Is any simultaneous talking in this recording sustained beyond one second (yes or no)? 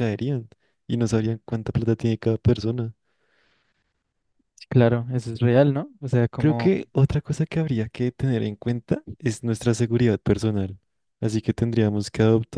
no